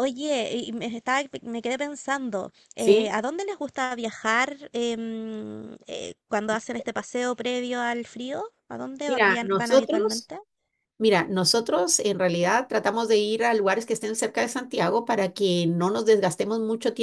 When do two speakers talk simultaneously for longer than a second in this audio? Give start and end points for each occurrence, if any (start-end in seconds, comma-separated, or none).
9.1-10.3